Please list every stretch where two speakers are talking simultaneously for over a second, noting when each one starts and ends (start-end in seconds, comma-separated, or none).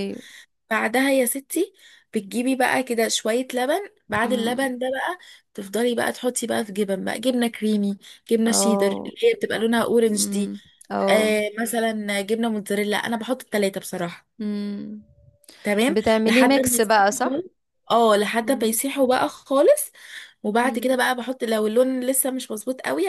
15.9-17.4